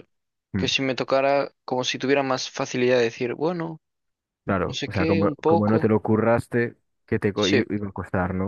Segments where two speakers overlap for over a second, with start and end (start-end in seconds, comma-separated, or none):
4.7-5.9